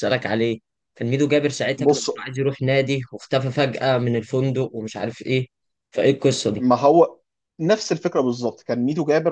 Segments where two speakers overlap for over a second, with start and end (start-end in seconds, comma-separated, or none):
none